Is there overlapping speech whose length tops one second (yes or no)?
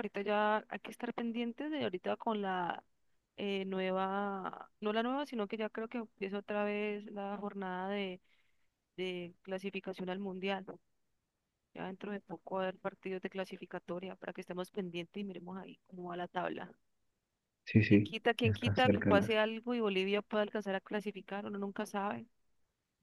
yes